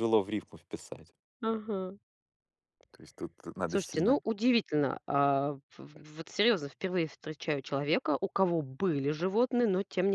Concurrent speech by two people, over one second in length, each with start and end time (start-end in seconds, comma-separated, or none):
none